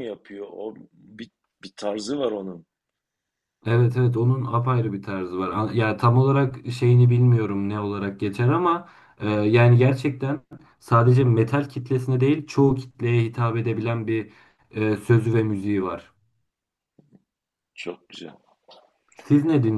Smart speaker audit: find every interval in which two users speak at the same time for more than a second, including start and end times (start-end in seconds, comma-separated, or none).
none